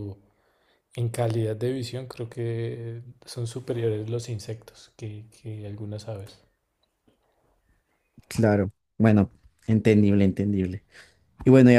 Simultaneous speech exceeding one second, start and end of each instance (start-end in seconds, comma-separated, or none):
none